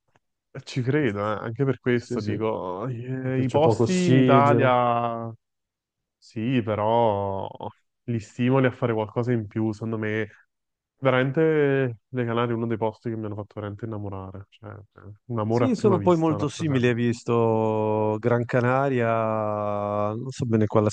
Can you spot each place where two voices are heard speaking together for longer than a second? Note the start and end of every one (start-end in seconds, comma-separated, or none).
3.2-4.8, 15.5-16.9